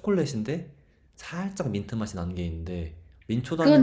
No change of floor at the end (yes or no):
no